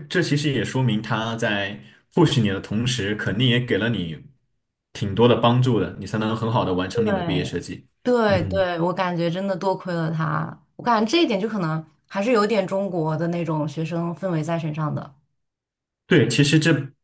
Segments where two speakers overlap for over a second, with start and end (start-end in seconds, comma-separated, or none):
none